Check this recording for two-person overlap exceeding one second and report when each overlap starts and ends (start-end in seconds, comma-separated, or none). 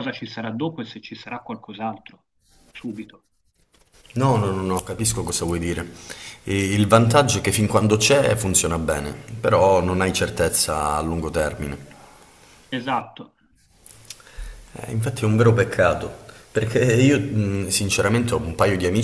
none